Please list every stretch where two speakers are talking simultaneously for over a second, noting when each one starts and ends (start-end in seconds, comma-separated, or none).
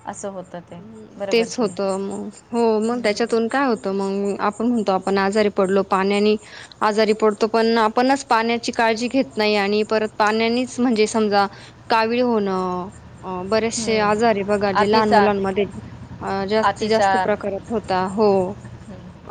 13.8-15.3